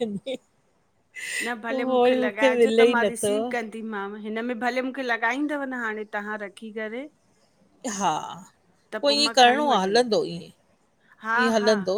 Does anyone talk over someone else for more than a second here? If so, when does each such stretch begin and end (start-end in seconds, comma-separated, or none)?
1.7-3.3